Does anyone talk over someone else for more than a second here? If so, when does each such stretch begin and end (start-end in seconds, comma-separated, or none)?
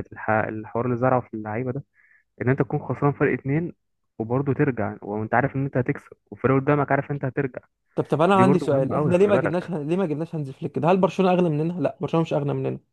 8.3-9.7